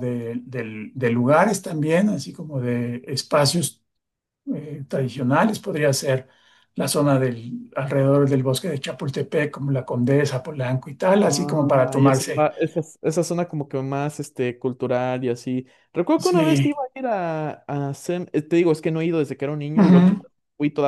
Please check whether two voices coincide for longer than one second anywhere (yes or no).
yes